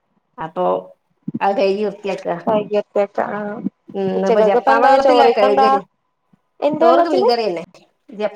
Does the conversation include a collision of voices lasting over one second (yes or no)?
yes